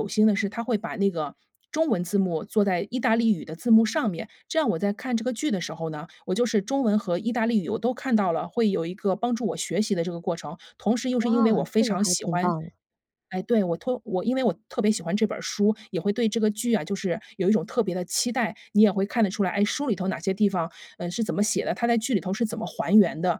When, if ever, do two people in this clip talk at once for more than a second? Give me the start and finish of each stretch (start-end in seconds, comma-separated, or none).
11.2-12.5